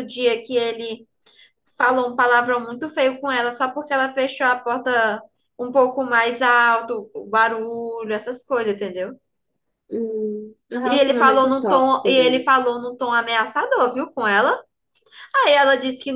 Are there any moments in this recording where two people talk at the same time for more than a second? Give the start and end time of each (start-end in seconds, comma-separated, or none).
10.8-12.6